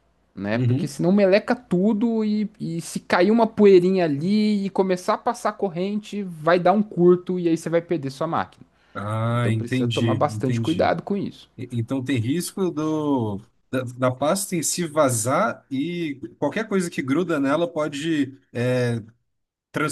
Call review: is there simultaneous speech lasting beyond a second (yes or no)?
yes